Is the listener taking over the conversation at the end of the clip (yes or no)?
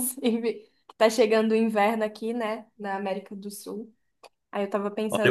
no